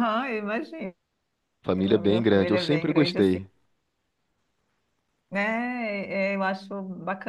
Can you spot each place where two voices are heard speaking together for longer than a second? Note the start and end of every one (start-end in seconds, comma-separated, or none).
1.8-3.4